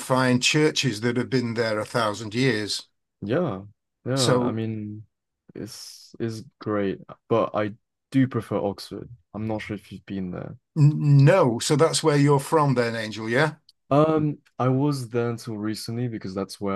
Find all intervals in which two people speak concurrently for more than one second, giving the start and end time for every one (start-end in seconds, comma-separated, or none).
none